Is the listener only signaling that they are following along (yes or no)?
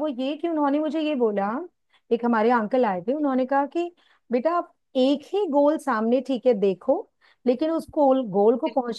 yes